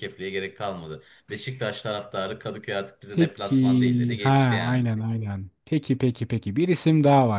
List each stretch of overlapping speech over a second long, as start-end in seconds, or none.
3.1-4.9